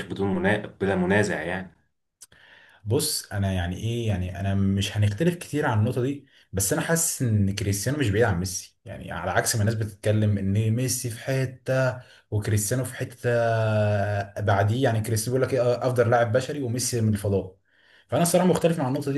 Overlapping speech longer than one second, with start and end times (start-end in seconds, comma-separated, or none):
none